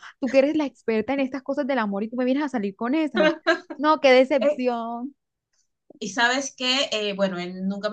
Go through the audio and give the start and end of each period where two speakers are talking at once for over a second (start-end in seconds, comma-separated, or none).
none